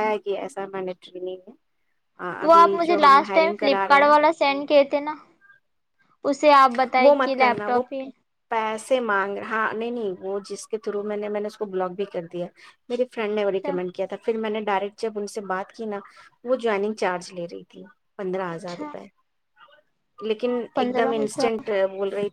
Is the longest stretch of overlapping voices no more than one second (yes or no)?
no